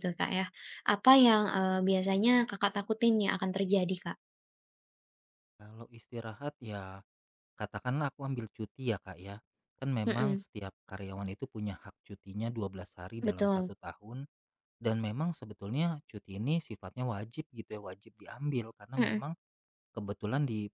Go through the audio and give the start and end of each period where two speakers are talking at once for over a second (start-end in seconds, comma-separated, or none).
none